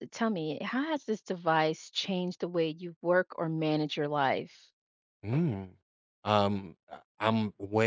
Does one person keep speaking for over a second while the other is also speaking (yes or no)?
no